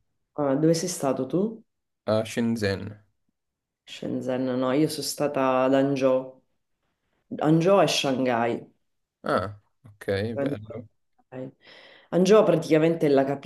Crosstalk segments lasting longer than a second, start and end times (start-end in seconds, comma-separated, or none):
none